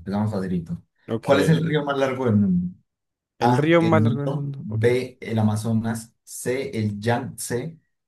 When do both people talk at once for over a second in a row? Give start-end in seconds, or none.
3.4-4.9